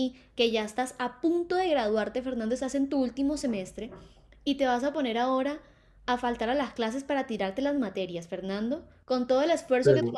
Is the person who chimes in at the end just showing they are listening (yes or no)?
yes